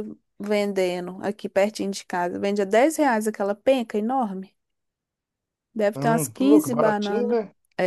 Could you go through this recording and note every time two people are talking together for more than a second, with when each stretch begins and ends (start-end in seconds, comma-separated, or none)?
6.0-7.4